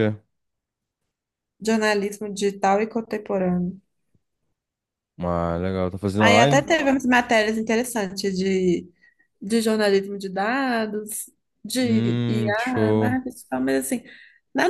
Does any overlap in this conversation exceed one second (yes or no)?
yes